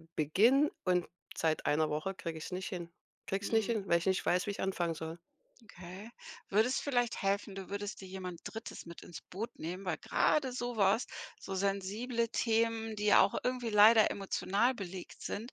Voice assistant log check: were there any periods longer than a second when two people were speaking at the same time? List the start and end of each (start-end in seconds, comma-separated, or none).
none